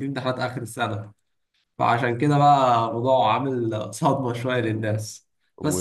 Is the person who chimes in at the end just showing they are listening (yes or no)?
yes